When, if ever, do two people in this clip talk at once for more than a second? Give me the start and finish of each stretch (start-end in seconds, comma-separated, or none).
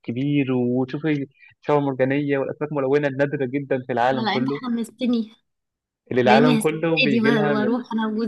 6.2-7.8